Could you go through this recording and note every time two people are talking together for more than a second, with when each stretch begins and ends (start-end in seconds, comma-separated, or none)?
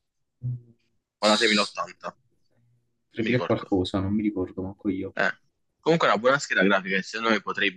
none